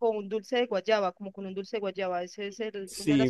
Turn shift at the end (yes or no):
yes